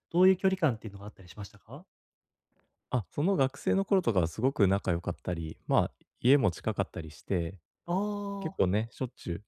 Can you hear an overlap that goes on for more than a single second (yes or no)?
no